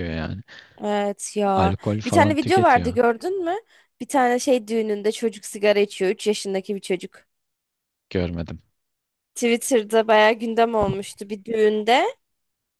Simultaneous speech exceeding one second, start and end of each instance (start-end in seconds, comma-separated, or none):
1.6-3.0